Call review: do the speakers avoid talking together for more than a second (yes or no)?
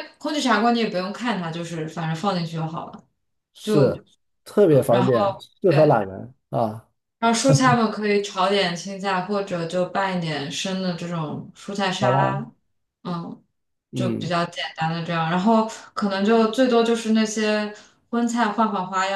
no